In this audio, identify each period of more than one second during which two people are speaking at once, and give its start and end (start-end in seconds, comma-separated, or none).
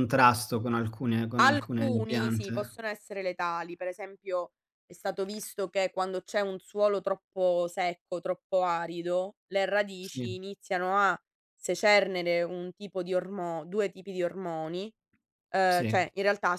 1.4-2.8